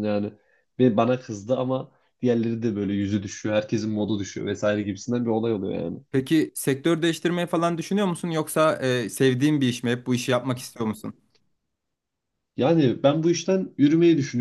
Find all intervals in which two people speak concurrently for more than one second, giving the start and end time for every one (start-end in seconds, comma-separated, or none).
none